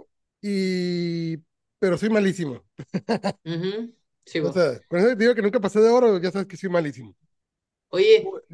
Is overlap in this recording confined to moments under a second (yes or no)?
yes